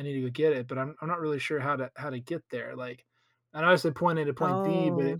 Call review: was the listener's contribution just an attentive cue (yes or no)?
yes